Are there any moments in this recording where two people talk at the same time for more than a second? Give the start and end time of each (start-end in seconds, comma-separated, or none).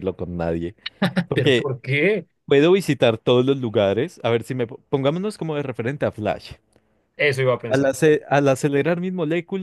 none